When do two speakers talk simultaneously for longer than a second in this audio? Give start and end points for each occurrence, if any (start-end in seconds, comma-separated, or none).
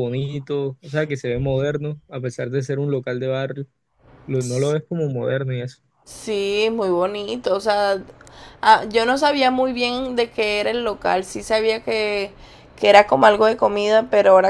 none